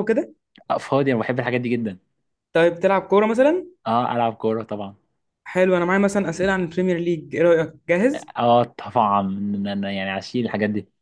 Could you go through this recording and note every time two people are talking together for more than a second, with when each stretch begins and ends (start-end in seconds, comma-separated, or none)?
none